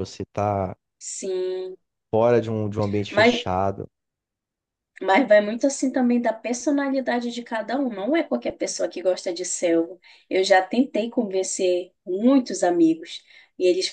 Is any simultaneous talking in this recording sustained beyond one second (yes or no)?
no